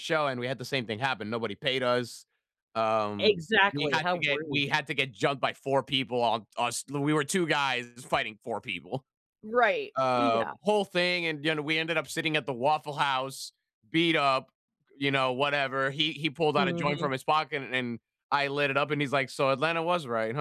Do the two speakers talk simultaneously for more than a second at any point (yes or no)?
yes